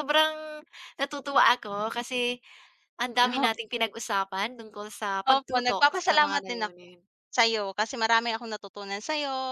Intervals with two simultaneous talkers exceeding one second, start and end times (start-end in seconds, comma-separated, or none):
5.3-6.8